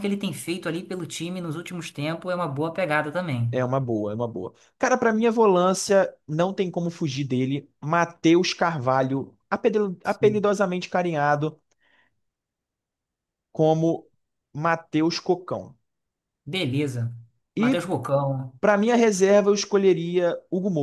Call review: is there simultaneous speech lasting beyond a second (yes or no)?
no